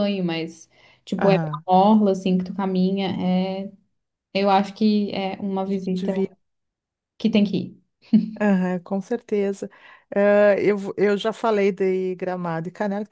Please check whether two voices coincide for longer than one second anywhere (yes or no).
no